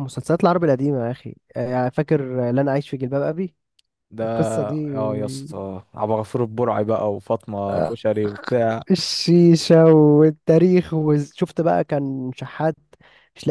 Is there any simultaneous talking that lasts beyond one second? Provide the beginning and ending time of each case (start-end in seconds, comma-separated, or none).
none